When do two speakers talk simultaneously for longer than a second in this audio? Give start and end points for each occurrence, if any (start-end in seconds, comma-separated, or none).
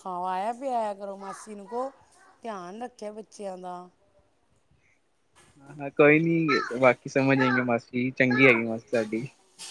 none